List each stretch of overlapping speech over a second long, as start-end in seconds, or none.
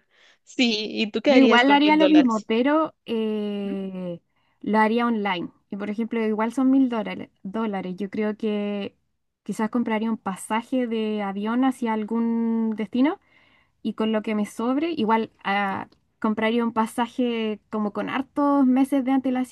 1.3-2.5